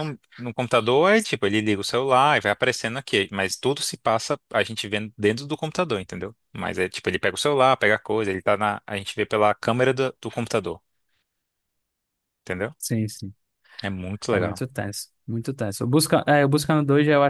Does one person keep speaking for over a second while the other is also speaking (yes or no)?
no